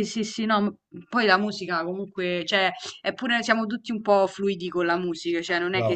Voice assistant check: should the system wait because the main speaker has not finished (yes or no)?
yes